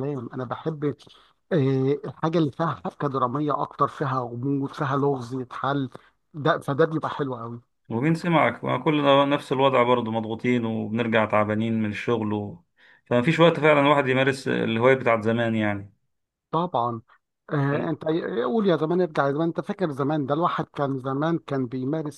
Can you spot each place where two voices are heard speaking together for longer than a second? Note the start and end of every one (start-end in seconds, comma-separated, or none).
none